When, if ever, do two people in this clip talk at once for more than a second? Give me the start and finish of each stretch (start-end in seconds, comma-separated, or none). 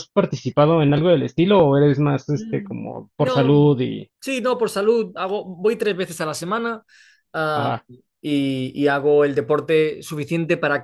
2.3-3.7